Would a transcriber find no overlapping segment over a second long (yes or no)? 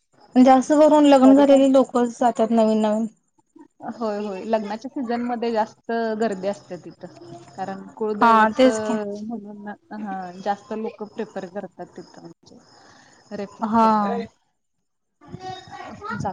yes